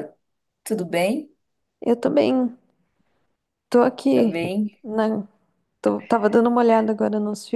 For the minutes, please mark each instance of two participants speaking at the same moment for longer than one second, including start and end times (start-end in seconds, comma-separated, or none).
none